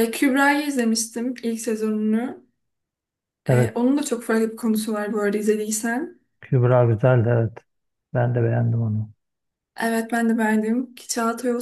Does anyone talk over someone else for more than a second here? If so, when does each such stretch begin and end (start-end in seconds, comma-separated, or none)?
none